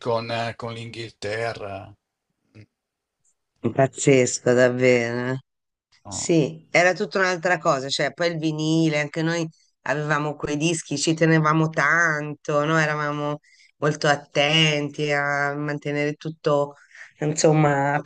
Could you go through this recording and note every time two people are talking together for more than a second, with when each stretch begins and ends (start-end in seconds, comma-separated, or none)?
none